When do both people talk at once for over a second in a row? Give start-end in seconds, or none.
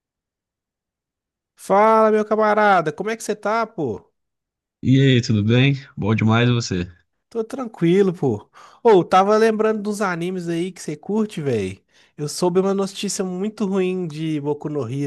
none